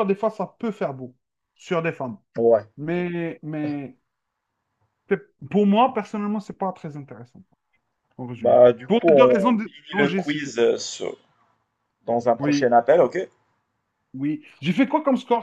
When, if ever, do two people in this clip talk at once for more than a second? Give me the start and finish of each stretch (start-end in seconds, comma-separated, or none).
8.4-10.6